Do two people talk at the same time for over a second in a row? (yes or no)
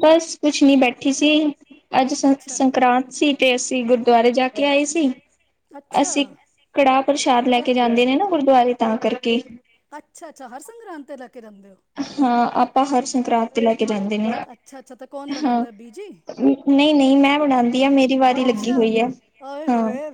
no